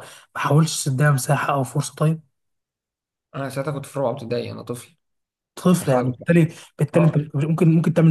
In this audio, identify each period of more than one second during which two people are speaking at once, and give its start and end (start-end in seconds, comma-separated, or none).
none